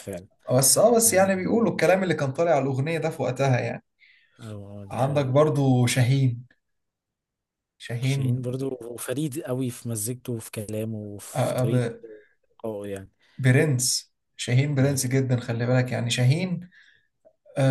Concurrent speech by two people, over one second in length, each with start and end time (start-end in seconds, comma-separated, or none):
none